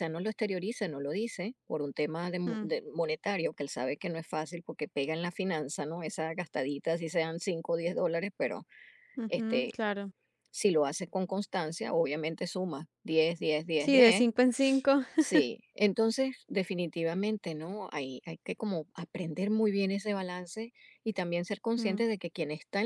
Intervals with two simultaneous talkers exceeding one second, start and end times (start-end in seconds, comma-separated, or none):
none